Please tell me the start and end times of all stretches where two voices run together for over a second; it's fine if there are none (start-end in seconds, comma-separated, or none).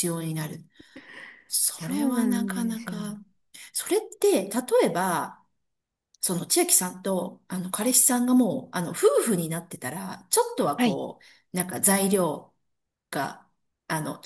1.8-3.2